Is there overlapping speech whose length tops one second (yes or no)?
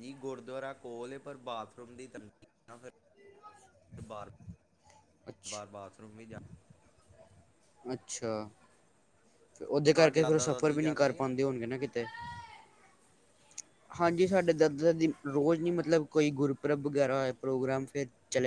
yes